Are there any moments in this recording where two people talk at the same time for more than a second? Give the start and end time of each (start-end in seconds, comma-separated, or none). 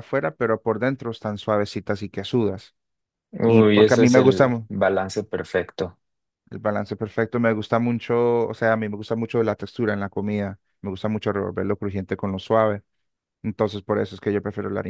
3.4-4.7